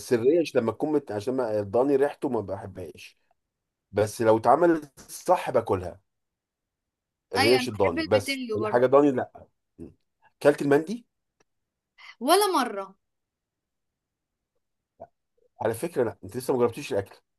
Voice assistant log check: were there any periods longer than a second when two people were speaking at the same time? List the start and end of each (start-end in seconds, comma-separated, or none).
7.4-8.9